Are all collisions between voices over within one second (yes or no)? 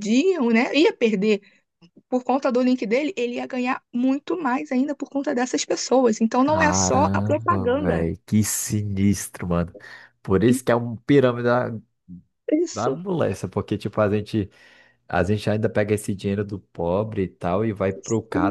no